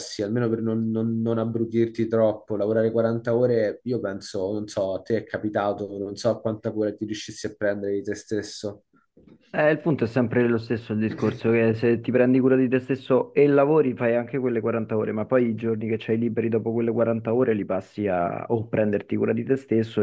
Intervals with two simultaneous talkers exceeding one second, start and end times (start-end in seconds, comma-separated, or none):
none